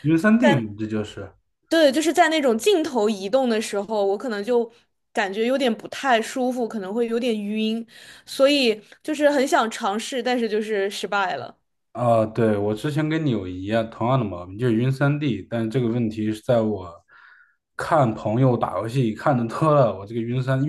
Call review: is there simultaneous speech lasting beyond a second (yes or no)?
no